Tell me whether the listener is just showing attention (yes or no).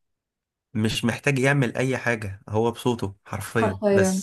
no